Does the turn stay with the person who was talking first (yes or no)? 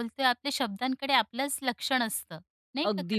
no